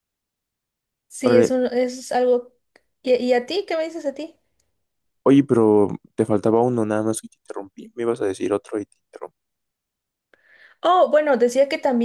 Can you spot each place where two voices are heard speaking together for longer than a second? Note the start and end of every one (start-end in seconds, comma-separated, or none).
none